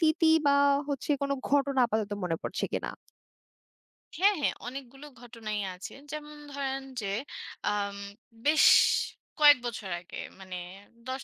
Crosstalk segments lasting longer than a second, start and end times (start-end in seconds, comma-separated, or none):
none